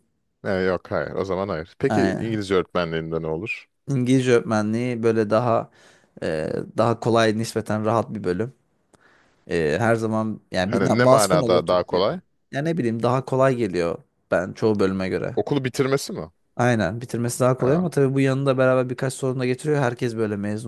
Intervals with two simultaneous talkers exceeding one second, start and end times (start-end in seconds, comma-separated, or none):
10.7-12.1